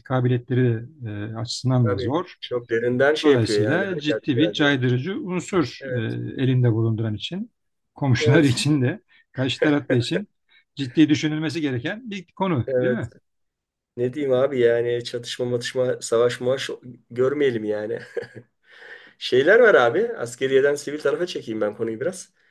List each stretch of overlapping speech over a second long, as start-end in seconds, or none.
3.2-4.8